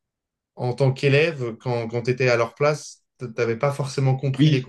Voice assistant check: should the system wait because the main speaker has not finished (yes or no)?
yes